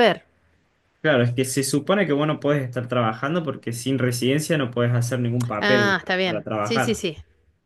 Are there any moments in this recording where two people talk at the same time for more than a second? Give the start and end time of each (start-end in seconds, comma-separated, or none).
5.6-7.0